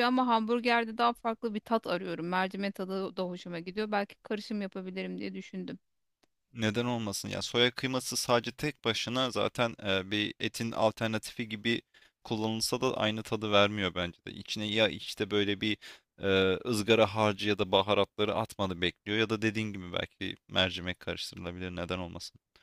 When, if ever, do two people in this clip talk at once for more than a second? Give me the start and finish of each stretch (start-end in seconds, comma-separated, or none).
none